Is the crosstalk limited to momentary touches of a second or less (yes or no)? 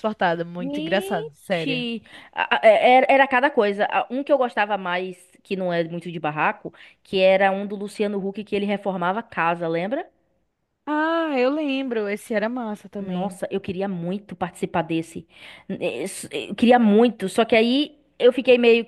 no